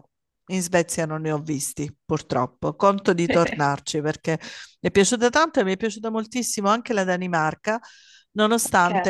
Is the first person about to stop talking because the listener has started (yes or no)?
no